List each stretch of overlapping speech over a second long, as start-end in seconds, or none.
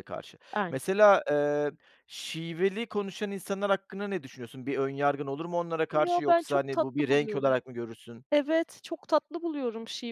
5.9-7.5